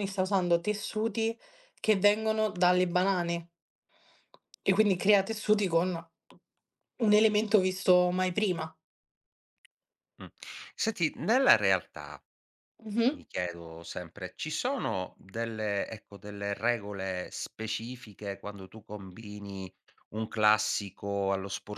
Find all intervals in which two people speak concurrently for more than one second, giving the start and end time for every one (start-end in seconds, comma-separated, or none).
none